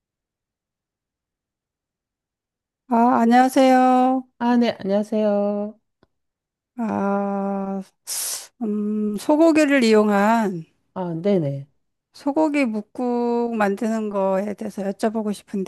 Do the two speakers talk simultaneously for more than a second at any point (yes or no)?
no